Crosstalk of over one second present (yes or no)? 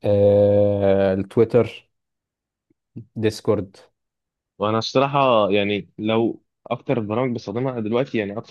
no